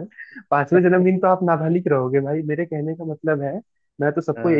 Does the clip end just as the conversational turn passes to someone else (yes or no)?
no